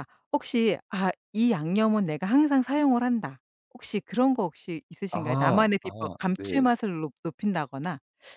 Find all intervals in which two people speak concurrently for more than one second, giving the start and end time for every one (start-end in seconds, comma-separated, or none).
5.1-6.6